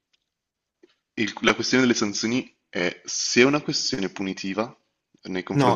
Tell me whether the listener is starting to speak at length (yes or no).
yes